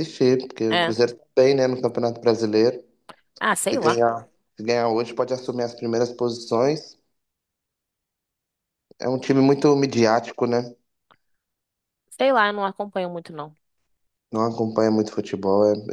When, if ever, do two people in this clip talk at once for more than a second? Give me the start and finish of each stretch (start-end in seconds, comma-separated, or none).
none